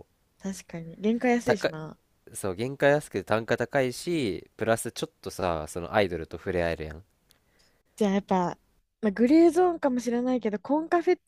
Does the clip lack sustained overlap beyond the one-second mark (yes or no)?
yes